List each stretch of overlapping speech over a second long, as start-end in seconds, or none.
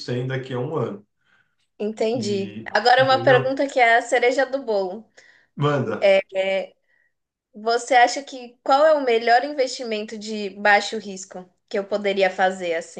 2.1-3.6